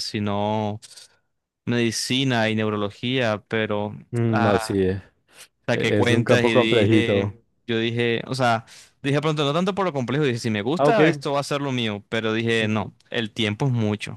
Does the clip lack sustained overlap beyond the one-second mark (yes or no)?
no